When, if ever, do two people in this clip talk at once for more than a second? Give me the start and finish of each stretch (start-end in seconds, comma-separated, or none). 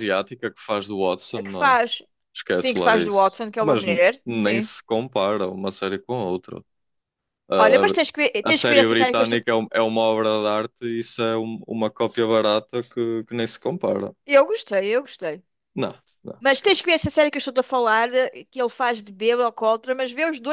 2.5-4.7, 7.6-9.4